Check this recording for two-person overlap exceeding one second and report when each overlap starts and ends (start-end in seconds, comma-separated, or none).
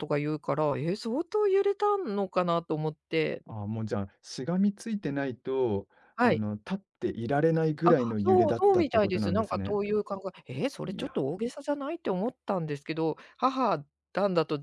7.8-9.8